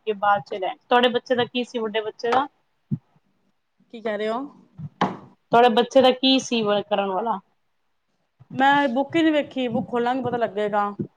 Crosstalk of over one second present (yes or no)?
no